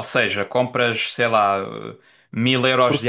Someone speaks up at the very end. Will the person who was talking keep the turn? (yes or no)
yes